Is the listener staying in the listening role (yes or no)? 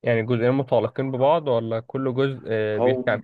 no